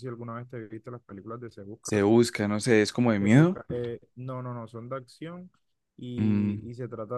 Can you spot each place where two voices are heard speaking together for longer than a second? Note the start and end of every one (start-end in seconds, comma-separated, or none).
none